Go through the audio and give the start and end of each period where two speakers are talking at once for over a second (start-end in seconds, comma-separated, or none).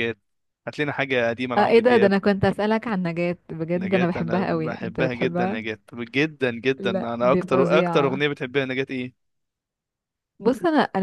3.8-5.6, 6.8-8.2